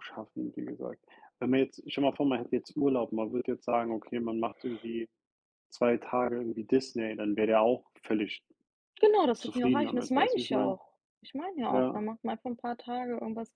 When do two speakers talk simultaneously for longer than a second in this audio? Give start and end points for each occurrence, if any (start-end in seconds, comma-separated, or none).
9.4-10.8